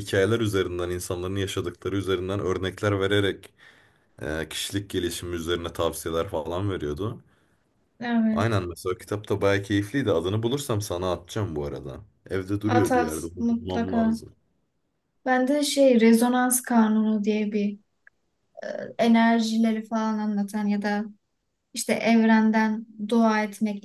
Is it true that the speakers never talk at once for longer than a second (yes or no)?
no